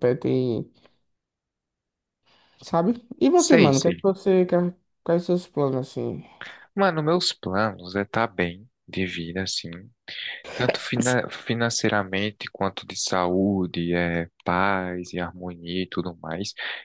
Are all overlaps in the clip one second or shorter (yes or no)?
yes